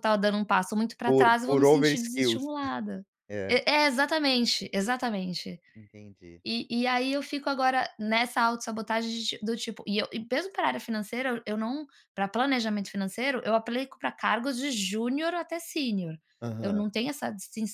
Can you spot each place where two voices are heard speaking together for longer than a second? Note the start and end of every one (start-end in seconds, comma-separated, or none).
1.0-2.5